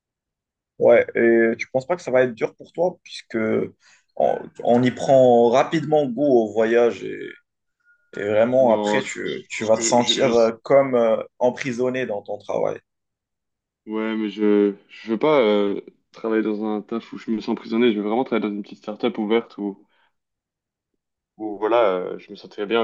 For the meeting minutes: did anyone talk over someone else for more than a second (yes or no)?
yes